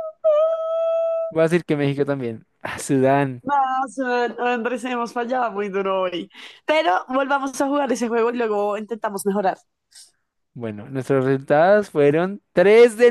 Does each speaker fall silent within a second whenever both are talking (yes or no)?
yes